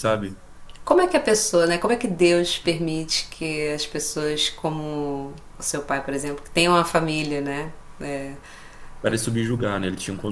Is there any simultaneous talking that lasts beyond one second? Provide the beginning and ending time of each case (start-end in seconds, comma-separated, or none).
none